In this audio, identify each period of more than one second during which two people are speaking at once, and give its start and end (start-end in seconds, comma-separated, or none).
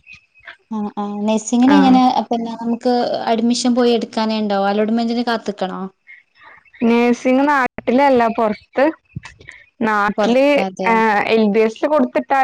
none